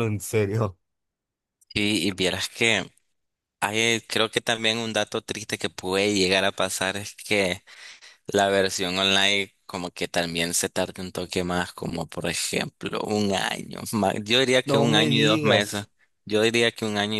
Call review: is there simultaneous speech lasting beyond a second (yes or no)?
yes